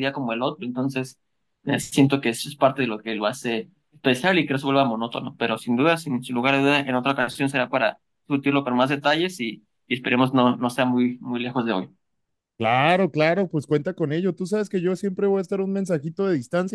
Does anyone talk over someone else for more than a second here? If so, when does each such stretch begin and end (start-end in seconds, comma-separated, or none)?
none